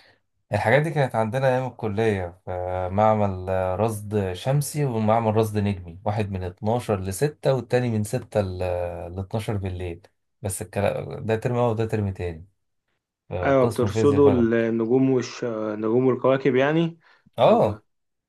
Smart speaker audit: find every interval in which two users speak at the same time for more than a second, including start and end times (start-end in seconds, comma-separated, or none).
13.4-14.7